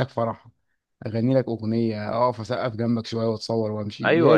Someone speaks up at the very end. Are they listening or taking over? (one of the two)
taking over